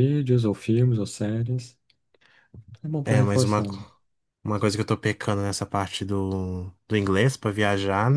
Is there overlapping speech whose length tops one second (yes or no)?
no